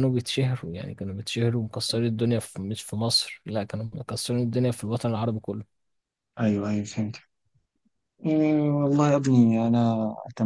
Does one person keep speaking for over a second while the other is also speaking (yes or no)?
no